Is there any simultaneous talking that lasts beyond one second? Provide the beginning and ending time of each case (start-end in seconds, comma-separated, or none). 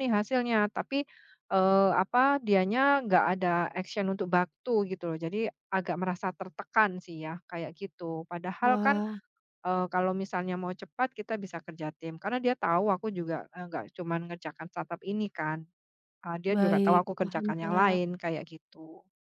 16.5-18.0